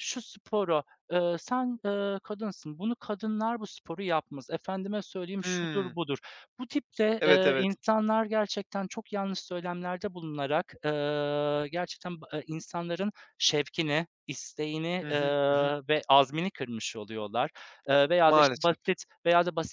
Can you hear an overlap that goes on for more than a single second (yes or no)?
no